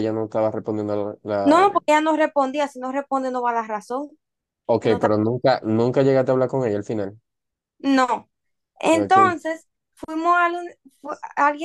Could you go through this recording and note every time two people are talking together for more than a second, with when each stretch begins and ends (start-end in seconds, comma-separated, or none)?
none